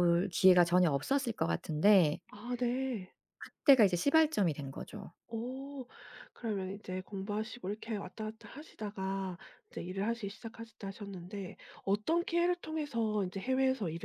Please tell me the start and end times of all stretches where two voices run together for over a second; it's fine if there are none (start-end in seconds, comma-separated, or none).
none